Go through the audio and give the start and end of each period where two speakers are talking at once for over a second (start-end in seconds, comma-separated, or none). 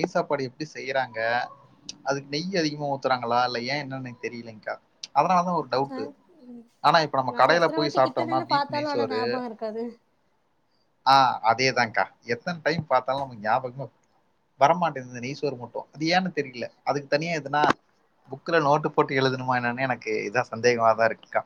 7.3-9.2